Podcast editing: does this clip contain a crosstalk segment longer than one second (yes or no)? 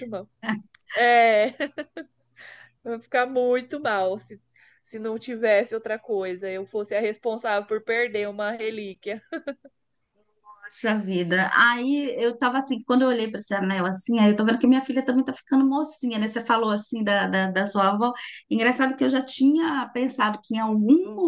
no